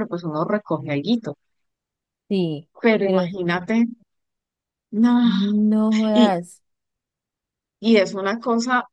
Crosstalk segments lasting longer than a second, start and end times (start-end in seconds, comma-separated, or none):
none